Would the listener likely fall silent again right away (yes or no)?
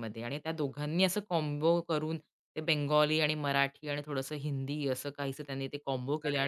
no